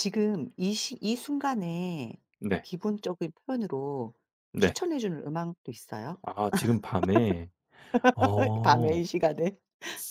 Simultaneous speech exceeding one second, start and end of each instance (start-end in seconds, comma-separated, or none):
none